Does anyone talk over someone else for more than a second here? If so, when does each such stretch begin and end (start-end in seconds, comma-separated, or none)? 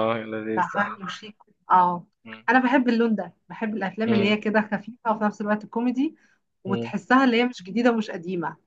none